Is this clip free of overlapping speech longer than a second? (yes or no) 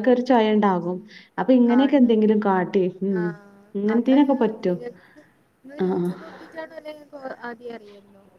yes